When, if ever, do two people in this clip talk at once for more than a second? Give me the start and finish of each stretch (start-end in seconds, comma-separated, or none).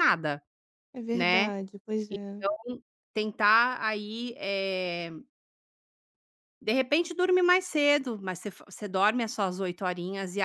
none